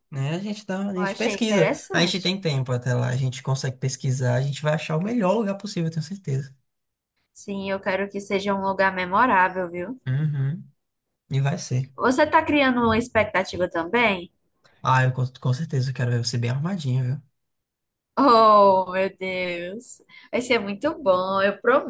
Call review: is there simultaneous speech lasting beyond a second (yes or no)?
yes